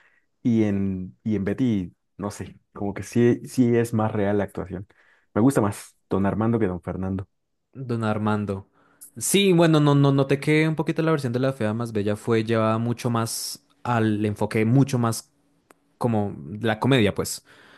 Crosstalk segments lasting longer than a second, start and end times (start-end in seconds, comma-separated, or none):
none